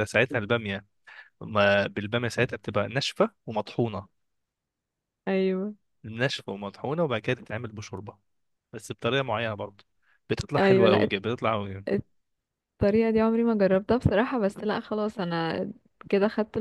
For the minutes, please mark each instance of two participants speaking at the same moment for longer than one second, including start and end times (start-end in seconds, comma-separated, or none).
none